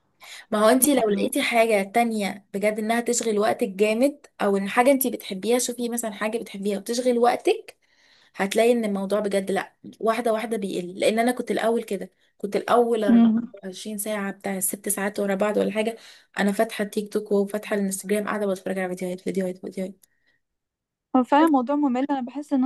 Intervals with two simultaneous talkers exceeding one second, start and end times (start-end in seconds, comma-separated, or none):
none